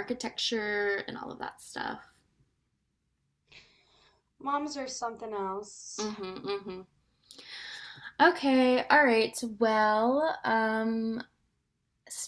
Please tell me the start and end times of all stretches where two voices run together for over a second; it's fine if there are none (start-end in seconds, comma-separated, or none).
none